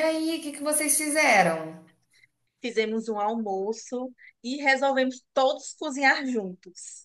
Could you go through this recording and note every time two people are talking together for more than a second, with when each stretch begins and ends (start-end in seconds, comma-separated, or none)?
none